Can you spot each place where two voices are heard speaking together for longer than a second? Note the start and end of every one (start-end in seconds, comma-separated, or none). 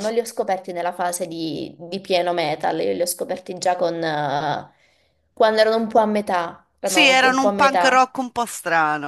6.8-8.1